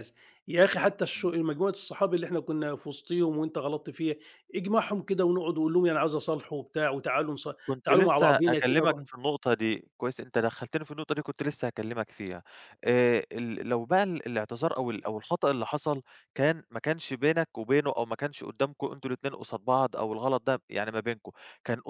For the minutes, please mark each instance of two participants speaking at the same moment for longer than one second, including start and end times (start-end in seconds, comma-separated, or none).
7.8-9.0